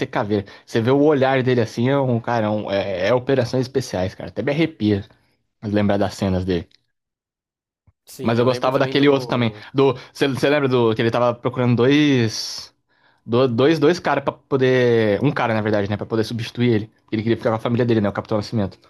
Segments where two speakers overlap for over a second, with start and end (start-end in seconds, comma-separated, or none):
8.2-9.6